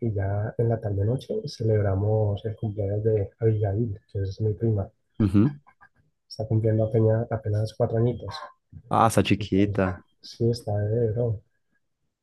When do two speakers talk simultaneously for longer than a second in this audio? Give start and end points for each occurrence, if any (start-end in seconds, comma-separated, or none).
none